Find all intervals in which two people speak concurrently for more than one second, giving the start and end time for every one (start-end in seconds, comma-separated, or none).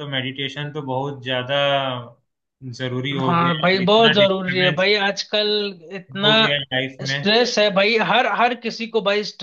3.2-4.9